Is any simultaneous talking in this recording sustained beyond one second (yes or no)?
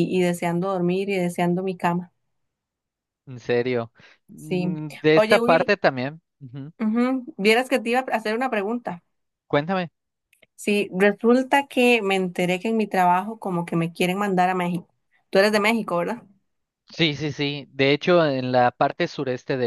yes